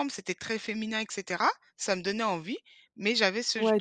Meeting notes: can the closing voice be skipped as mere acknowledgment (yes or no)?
no